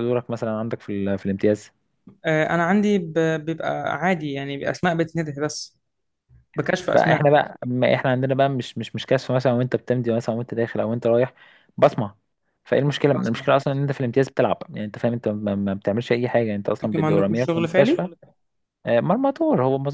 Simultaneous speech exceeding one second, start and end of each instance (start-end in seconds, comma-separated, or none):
16.8-18.1